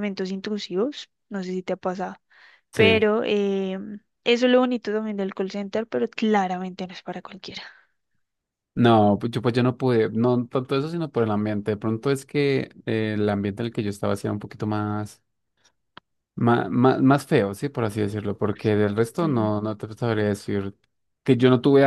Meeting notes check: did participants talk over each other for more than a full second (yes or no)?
no